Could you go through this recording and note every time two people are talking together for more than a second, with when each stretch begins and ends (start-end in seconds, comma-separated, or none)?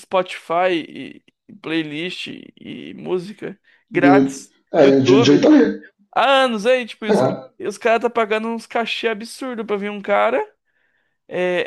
3.9-5.5